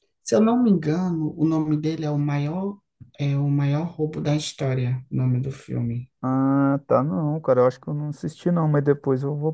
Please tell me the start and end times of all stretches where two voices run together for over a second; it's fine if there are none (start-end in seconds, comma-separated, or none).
none